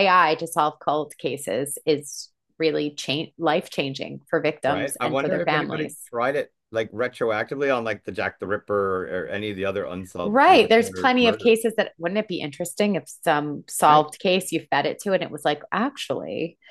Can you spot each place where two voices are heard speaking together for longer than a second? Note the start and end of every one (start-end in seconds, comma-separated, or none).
4.6-6.1, 10.2-11.6